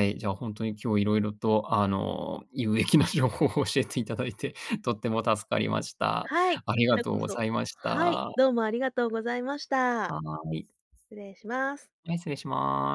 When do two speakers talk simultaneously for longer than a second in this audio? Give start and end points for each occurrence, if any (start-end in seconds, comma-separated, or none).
6.3-8.3